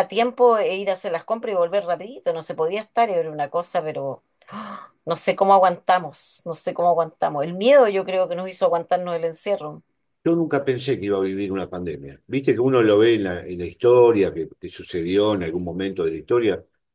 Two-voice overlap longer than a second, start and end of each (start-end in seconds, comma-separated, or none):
none